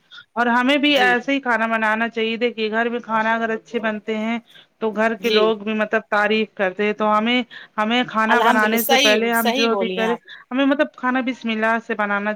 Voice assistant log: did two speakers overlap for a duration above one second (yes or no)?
yes